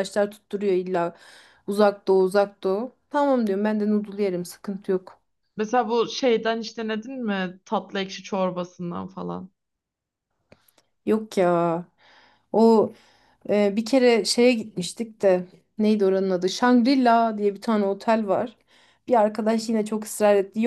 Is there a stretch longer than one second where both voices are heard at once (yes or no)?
no